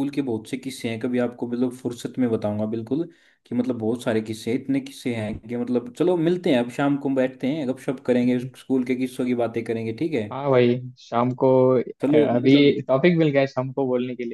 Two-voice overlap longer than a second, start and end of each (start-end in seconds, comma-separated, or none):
none